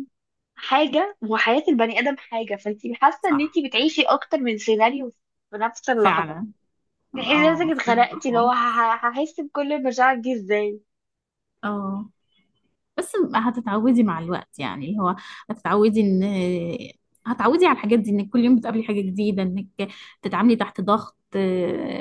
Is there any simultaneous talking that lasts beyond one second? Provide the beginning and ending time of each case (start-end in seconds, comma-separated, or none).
7.2-8.7